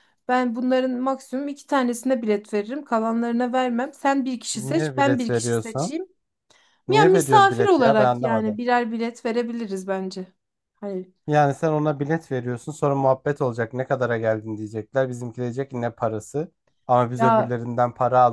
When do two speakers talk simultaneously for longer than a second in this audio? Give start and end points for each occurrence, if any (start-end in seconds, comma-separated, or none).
4.5-5.9, 6.9-8.6